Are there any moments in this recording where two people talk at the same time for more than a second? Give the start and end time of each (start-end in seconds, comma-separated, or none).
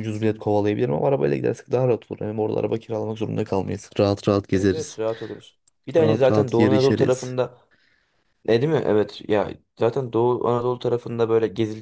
6.0-7.3